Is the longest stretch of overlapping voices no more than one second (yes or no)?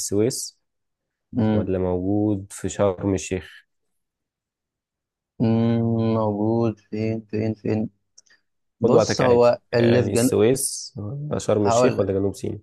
no